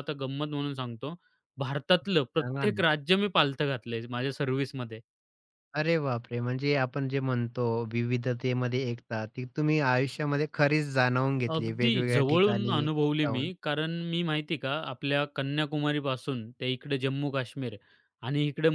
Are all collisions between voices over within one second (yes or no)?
no